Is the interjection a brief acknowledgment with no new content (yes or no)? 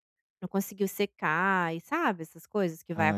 no